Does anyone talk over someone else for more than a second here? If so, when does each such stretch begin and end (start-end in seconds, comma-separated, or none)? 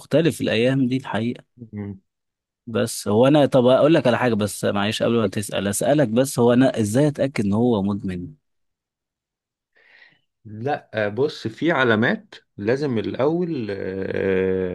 none